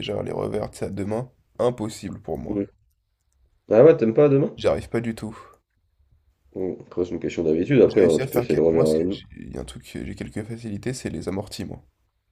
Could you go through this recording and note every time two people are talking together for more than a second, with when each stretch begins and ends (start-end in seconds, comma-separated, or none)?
7.9-9.2